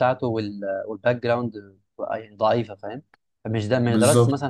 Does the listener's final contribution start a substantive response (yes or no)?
no